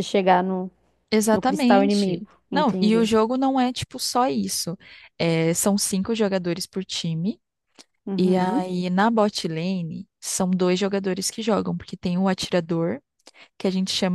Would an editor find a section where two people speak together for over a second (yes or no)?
yes